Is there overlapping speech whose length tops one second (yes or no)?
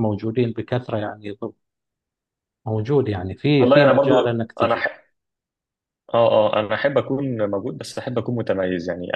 yes